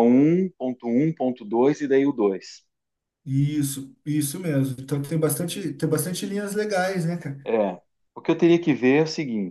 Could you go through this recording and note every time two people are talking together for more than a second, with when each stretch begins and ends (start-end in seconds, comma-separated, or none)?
none